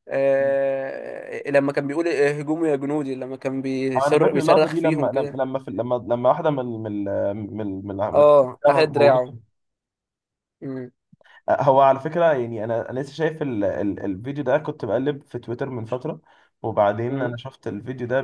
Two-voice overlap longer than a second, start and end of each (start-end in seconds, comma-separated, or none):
4.0-5.4